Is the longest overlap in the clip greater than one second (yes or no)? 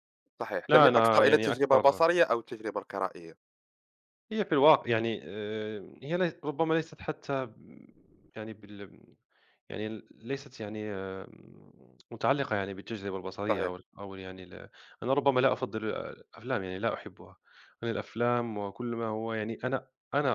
yes